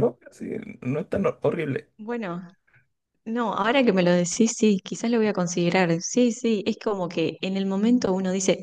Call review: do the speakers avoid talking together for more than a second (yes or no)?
yes